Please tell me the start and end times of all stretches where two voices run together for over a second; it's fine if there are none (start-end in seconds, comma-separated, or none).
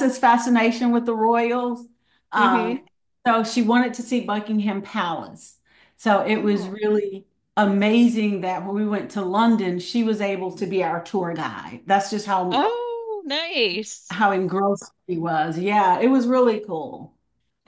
none